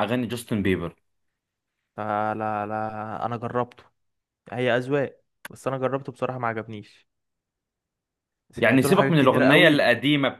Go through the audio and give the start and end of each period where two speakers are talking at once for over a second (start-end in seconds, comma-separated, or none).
8.6-9.9